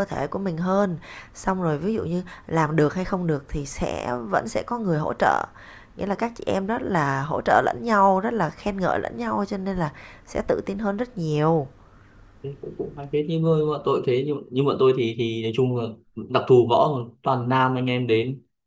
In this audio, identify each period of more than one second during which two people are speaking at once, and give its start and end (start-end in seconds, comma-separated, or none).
none